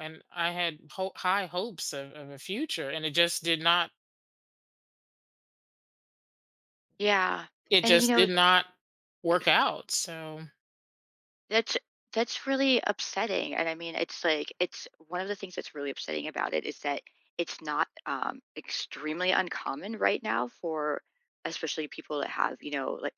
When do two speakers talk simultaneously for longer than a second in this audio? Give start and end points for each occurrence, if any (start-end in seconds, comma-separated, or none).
none